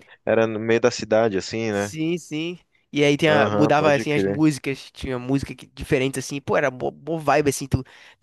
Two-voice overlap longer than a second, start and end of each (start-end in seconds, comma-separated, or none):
3.2-4.4